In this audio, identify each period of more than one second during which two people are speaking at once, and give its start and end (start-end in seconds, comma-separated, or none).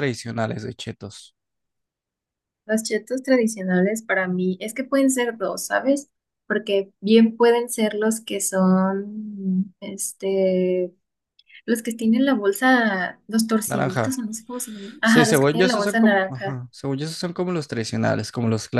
15.0-16.6